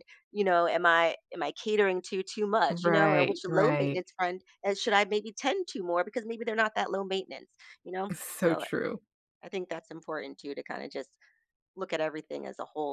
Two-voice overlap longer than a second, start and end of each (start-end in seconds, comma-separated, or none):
2.7-4.0